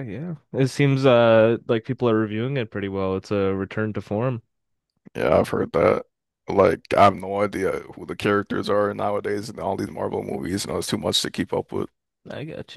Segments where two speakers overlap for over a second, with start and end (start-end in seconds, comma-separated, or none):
none